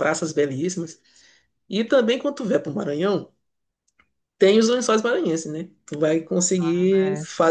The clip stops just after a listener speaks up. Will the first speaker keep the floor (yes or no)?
yes